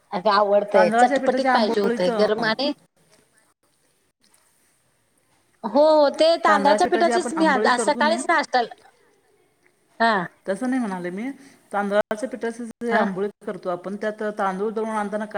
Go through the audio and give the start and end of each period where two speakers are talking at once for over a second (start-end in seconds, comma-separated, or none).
0.7-2.3